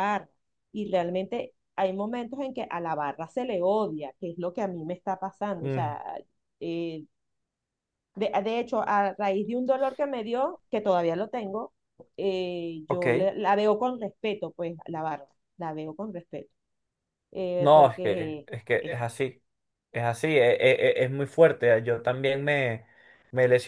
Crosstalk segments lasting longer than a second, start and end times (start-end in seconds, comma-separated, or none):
17.6-19.0